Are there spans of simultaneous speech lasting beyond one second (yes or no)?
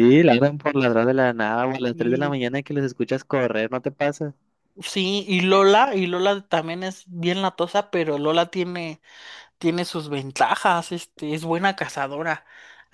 no